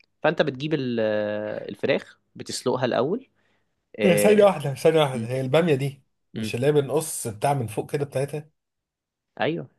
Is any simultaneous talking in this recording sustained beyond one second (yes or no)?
no